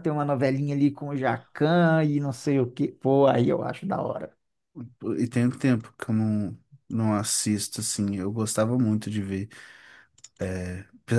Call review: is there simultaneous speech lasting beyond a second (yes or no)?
no